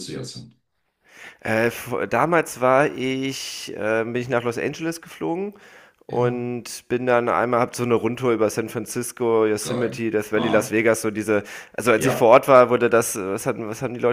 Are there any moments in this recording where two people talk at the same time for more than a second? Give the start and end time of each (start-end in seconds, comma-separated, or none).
9.6-10.9